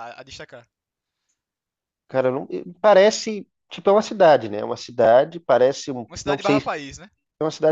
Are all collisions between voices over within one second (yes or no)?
yes